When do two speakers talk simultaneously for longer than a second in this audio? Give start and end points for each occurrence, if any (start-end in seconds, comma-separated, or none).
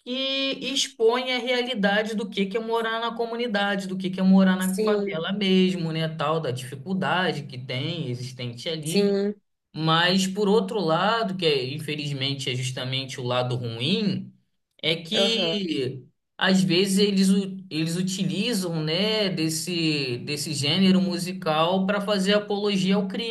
none